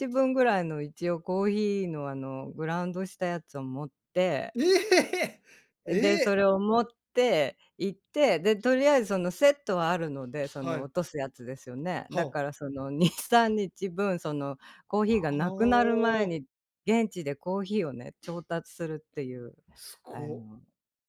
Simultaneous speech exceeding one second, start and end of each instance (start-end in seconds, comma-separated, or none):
15.0-16.4